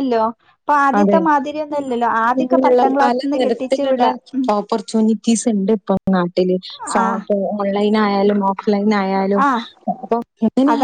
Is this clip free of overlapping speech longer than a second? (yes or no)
no